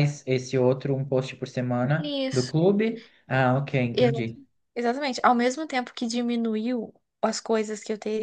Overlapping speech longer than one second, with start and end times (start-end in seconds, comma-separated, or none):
none